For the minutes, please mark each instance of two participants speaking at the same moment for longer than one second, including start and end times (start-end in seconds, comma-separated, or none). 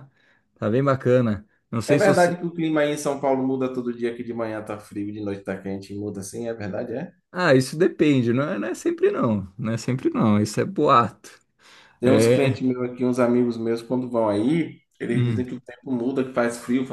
none